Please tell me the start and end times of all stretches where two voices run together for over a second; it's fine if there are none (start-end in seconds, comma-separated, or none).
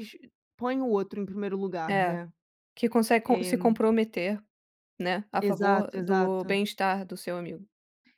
5.4-6.6